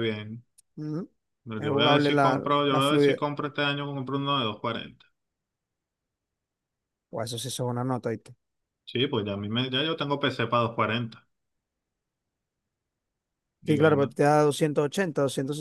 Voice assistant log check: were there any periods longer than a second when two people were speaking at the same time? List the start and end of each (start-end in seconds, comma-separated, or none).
1.6-3.2